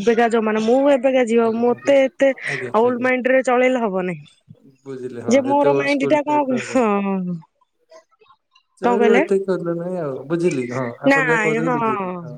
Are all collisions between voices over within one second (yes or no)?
no